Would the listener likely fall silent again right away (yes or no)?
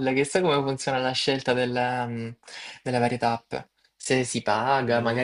yes